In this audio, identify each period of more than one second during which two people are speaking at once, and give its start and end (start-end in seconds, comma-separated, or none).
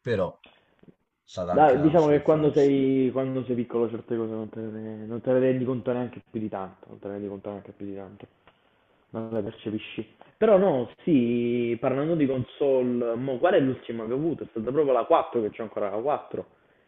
1.5-2.7